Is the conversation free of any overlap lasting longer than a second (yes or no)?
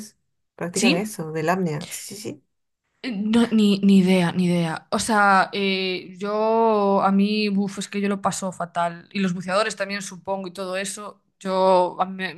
yes